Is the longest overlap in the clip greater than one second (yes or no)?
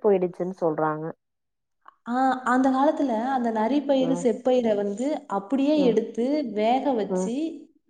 no